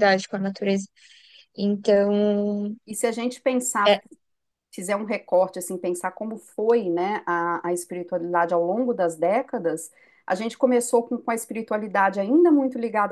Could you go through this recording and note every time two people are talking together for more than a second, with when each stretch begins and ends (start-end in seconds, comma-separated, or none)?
none